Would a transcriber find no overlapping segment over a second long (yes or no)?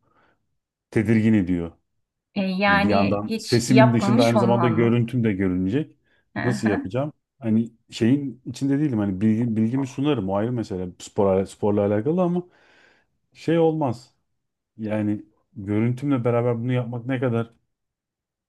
no